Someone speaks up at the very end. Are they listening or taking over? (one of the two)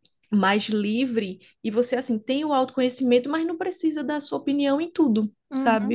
taking over